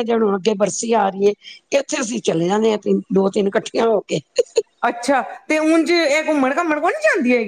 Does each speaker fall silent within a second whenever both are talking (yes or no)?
yes